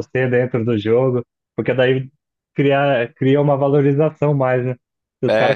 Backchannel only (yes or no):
yes